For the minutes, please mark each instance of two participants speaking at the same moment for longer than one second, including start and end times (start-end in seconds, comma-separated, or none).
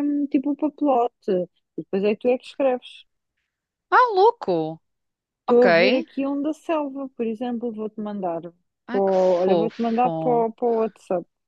9.0-10.5